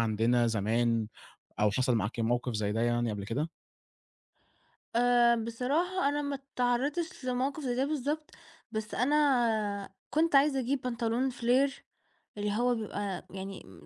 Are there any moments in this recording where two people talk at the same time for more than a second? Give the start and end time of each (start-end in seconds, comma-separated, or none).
none